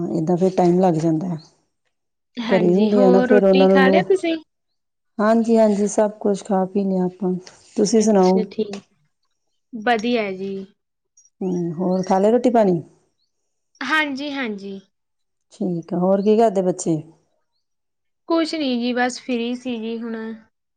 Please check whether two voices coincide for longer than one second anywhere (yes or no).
yes